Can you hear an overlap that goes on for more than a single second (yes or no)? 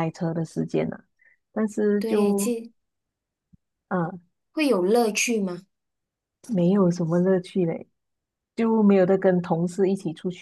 no